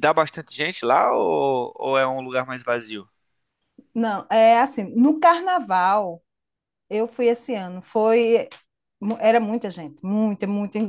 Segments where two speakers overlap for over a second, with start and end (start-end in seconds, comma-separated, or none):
none